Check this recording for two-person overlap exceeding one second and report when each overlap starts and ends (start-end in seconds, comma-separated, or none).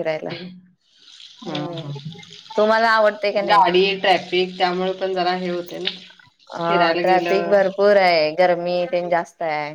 none